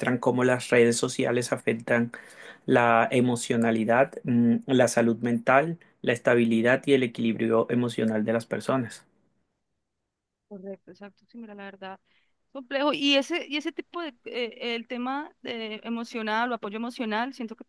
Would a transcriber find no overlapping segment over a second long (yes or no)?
yes